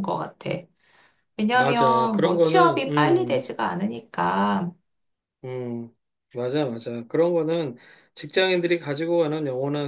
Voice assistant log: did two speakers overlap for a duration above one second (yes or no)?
yes